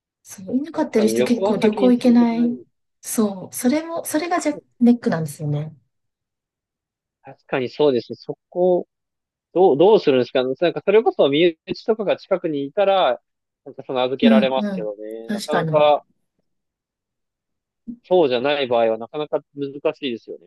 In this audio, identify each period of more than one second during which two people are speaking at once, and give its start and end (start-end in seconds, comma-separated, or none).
0.7-2.5, 14.2-15.9